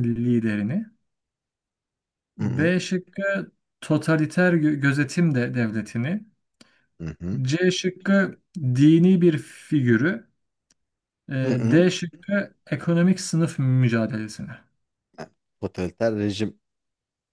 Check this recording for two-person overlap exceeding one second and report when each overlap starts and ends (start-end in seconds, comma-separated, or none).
none